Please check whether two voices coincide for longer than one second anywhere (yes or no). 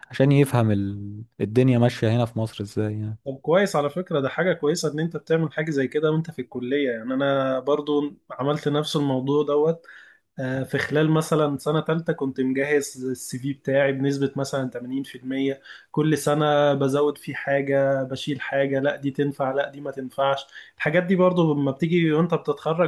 no